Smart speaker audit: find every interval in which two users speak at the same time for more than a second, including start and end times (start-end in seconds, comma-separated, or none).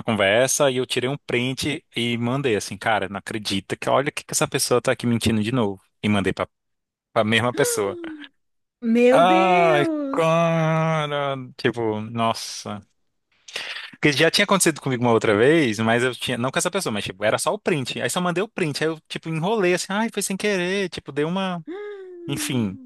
9.1-10.5